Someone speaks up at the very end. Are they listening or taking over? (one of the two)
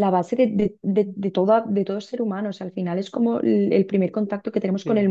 taking over